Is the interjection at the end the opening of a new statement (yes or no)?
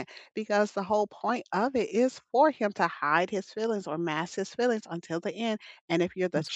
no